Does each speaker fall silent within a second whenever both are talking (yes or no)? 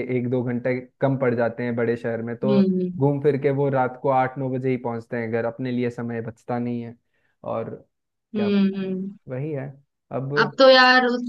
yes